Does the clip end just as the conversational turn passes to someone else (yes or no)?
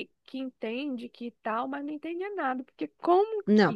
no